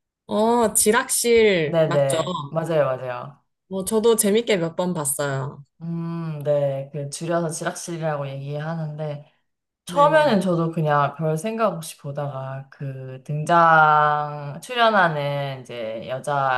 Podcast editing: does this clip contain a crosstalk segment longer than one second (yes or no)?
no